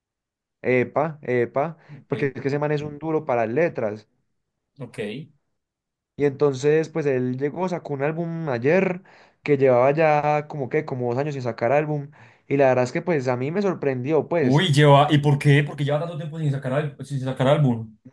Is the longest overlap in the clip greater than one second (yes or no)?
no